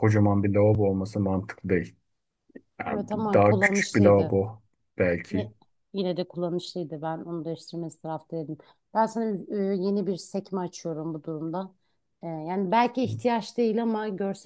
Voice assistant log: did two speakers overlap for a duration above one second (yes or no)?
yes